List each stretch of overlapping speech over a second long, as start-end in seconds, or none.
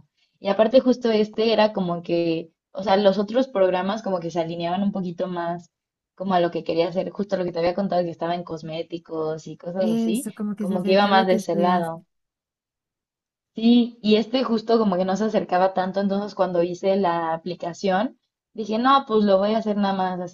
9.8-11.9